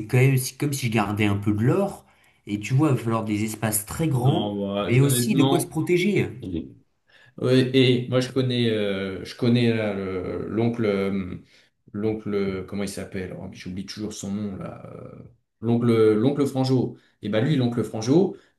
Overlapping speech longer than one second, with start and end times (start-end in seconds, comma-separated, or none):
4.2-5.7